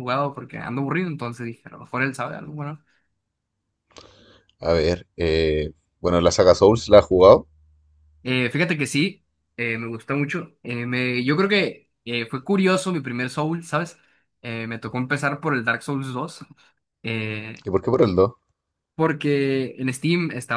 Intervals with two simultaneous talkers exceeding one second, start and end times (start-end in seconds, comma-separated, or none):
none